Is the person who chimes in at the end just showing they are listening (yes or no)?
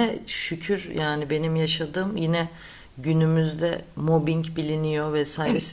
yes